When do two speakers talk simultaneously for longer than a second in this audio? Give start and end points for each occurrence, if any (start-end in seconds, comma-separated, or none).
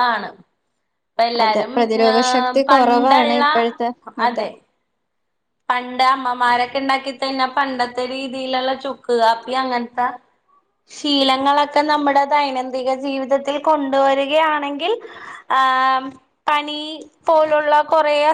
1.4-3.4